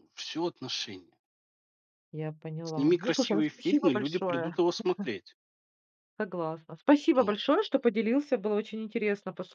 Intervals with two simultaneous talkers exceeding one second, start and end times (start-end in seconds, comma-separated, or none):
2.6-4.5